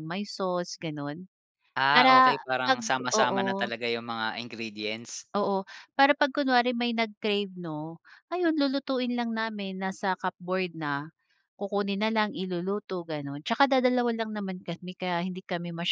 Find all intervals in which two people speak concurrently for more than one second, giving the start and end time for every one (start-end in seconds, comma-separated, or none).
1.9-3.7